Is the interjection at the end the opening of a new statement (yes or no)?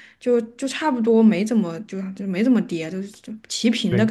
yes